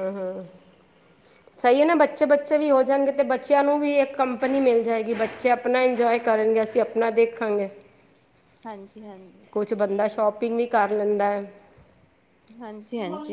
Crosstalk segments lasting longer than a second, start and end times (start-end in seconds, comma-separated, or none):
none